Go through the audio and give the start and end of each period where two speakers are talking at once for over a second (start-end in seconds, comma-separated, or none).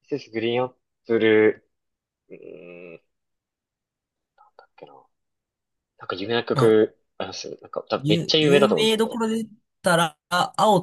8.0-9.2